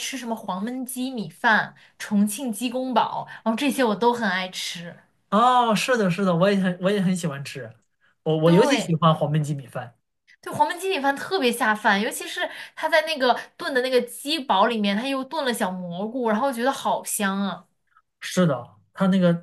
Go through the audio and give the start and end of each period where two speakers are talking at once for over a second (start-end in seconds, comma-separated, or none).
none